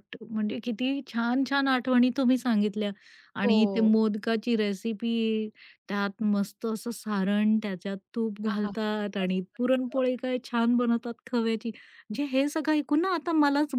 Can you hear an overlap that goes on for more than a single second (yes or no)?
yes